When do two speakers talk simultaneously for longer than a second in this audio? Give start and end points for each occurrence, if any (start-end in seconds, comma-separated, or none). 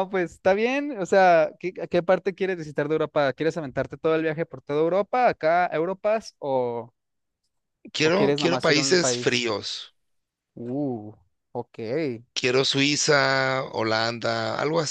8.0-9.5